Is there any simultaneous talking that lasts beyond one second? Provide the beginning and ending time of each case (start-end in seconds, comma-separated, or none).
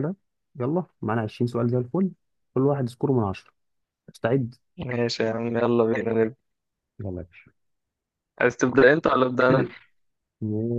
none